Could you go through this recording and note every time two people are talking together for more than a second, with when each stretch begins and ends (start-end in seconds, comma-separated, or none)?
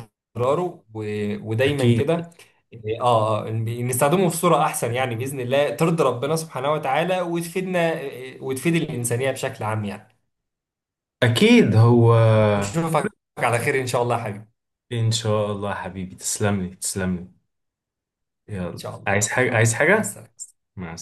18.7-20.2